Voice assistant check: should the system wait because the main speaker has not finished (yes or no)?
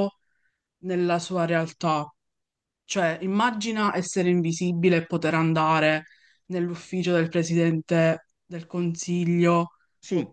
no